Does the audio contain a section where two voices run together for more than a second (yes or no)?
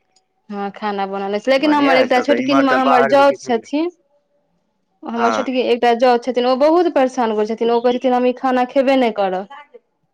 yes